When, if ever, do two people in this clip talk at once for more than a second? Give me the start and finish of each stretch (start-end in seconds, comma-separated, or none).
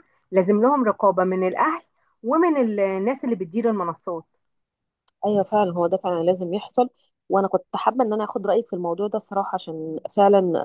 none